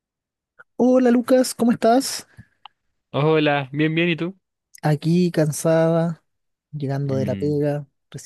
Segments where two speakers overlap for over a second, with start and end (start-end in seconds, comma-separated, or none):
none